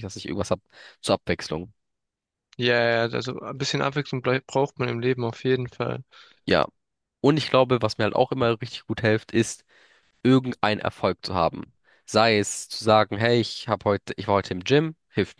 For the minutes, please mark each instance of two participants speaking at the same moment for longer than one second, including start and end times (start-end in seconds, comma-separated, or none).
none